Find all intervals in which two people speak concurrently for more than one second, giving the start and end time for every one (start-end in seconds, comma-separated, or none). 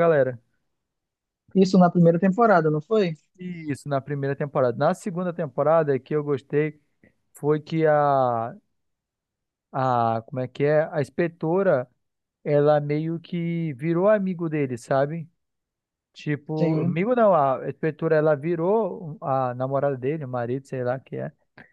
none